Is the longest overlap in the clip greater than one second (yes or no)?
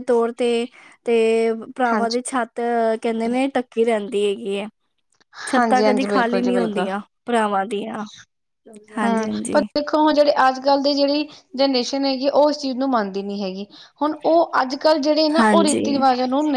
yes